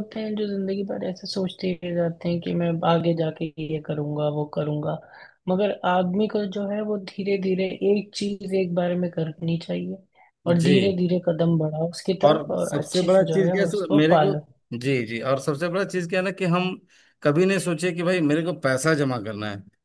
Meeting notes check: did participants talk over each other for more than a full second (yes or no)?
yes